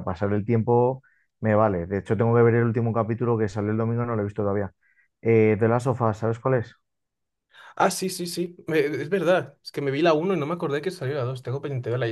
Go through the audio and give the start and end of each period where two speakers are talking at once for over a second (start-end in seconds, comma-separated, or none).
none